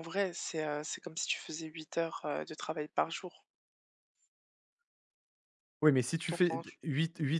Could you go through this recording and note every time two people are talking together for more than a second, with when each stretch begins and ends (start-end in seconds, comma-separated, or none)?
none